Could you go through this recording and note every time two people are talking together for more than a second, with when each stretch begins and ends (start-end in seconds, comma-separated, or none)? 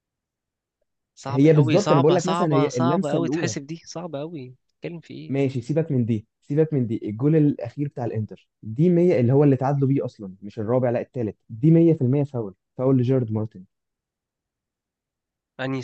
1.3-3.5